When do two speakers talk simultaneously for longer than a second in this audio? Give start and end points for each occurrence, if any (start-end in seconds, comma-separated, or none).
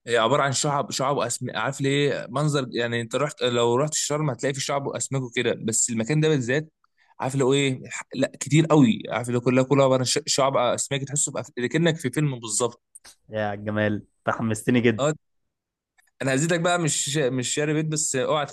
none